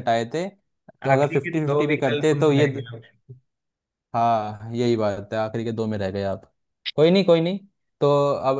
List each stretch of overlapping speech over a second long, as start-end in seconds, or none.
1.1-2.7